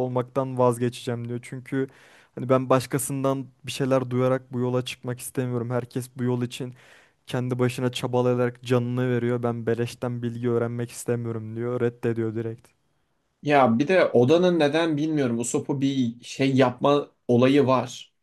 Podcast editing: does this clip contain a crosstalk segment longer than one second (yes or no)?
no